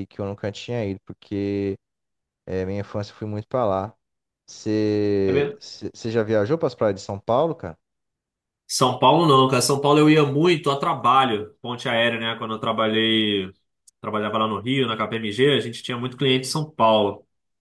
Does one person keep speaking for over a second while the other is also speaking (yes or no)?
no